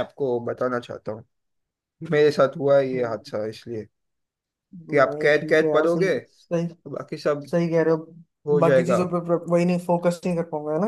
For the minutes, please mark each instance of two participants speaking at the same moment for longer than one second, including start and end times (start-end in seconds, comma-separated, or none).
4.9-6.5